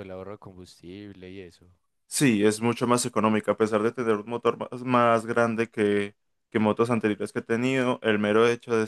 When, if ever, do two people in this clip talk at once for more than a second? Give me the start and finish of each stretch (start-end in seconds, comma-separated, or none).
none